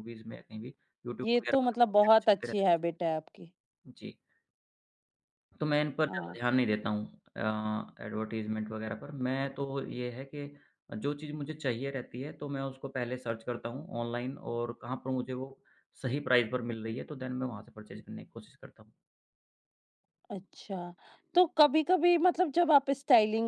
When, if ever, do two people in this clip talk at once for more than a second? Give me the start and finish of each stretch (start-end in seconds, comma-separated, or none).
1.2-2.5